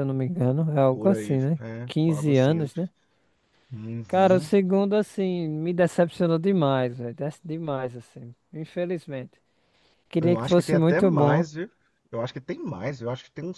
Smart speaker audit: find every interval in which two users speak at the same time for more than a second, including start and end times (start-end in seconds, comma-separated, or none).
0.9-2.7, 10.2-11.4